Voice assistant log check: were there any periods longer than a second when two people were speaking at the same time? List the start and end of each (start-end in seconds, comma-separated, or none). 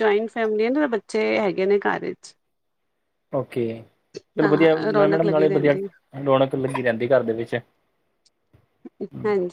4.4-5.8